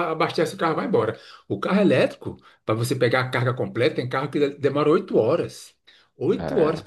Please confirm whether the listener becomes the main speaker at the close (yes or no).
no